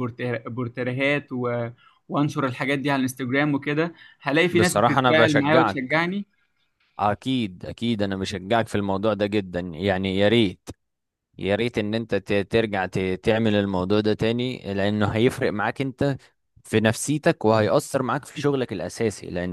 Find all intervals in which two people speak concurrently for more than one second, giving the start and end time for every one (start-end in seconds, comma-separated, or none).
4.5-6.0